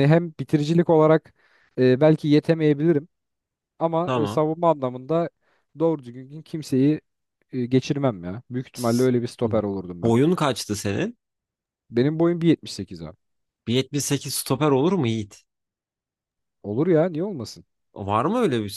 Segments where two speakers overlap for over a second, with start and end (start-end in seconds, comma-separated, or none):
none